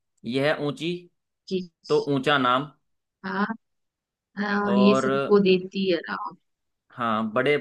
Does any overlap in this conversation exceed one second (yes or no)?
no